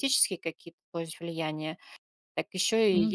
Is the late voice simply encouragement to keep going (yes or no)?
yes